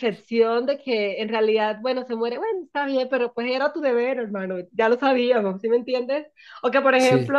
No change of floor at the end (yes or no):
yes